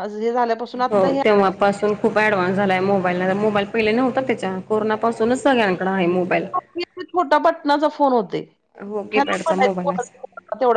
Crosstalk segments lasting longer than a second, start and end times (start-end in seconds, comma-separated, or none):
none